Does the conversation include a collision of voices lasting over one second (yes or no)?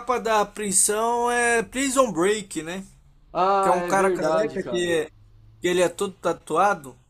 yes